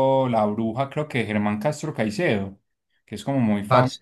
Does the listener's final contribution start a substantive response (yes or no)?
no